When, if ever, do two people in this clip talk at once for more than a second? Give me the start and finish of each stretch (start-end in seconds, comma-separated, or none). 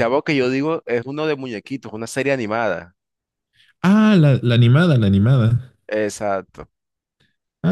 none